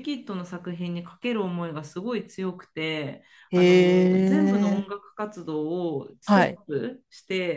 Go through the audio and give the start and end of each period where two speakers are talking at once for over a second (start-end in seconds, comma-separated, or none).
3.5-4.8